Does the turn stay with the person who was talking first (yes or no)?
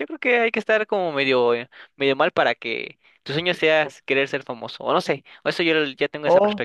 no